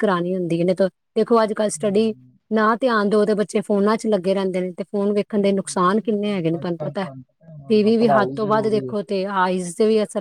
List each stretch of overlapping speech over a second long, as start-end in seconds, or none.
7.7-8.9